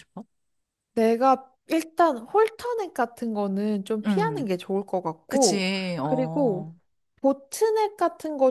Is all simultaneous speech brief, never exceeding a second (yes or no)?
no